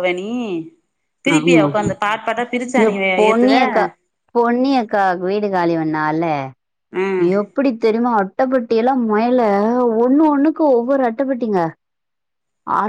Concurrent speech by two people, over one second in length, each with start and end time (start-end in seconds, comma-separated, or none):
none